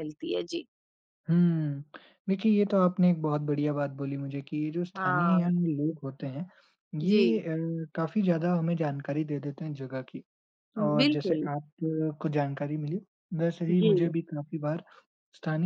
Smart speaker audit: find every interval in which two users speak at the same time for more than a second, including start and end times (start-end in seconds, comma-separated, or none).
none